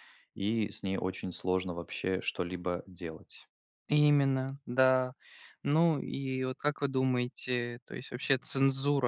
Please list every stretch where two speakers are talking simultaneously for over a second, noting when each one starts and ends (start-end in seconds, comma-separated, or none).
none